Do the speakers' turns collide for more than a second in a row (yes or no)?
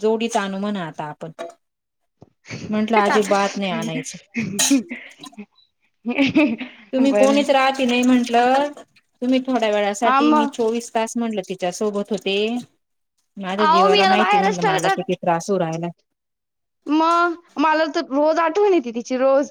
yes